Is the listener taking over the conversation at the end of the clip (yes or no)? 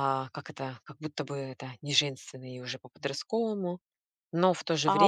yes